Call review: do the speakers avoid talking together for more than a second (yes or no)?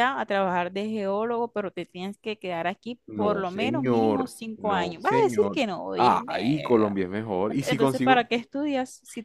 no